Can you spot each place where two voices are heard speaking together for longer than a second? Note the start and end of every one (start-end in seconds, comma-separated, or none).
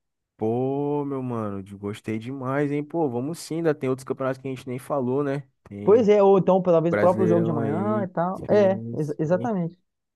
6.9-9.5